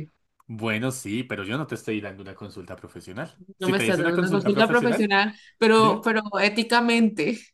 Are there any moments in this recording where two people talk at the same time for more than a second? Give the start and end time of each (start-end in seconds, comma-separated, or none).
3.6-5.1